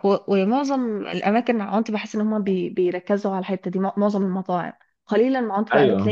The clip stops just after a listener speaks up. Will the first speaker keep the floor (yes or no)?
yes